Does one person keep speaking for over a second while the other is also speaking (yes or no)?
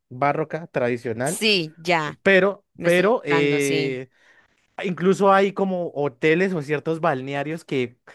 yes